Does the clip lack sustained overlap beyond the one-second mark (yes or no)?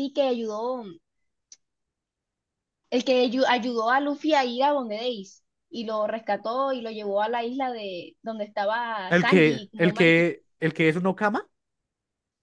no